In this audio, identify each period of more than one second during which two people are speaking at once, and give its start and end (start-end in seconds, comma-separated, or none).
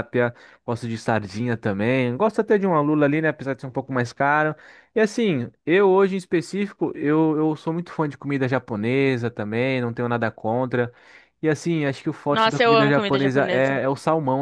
12.3-13.8